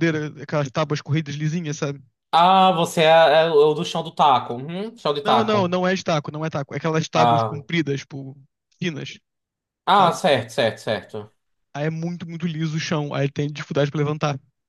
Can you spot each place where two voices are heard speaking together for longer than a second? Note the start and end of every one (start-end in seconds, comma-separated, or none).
none